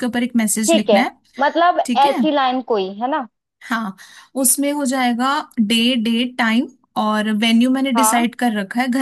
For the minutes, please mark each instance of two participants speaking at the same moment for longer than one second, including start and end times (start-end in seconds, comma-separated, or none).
none